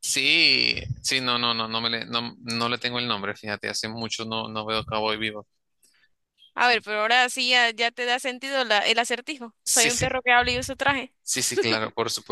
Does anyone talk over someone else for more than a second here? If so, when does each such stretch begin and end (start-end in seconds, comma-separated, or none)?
none